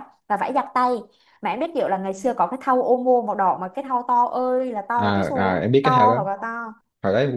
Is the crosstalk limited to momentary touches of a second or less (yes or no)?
no